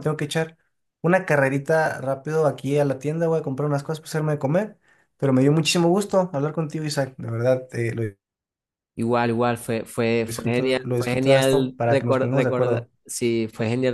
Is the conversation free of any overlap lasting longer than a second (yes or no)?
no